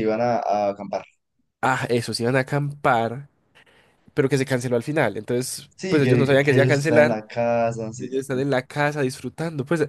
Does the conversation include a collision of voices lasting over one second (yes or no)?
yes